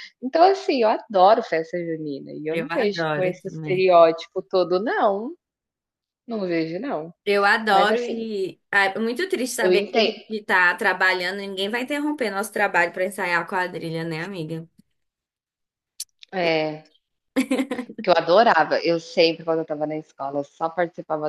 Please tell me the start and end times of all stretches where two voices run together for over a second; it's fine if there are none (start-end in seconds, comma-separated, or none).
2.5-3.9